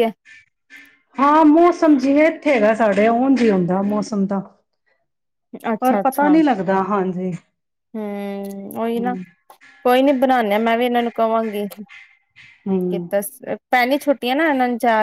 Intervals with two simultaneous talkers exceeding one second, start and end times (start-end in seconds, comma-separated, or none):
none